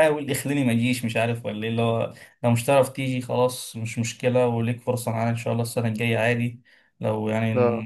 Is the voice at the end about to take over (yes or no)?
no